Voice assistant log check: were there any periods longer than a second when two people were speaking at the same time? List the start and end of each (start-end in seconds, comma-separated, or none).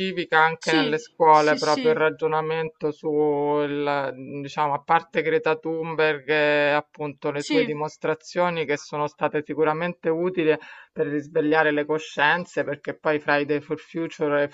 0.6-2.0